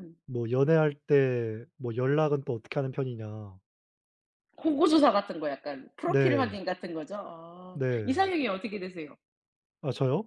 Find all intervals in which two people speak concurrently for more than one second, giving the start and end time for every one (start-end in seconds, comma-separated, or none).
none